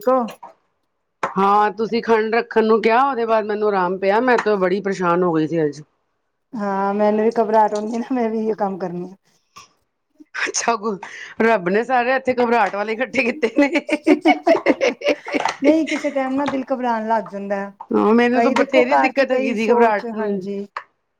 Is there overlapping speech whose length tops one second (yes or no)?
yes